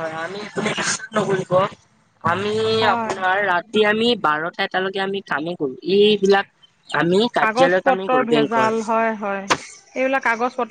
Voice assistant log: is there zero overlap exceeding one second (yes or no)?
no